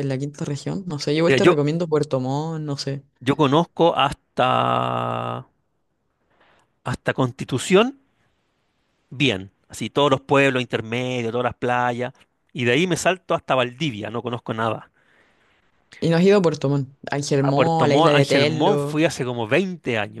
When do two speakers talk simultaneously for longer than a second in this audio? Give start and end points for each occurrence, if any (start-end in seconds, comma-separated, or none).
17.4-19.1